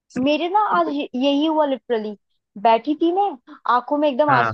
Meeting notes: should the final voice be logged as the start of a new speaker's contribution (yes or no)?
no